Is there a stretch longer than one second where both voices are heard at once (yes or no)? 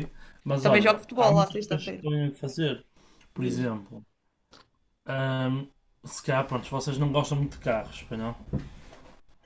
yes